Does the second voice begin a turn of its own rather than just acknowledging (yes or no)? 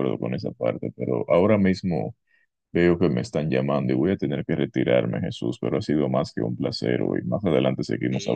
yes